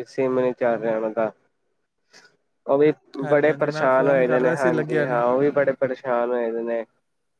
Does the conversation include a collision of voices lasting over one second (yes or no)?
yes